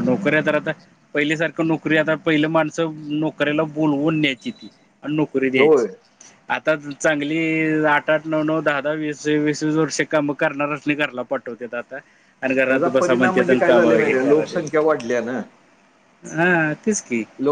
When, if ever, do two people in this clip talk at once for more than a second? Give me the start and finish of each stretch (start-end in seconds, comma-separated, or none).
12.7-14.6